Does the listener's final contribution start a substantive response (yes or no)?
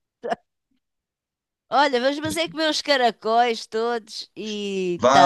yes